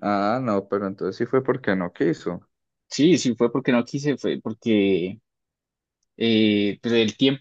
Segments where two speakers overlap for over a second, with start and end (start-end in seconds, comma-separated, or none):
none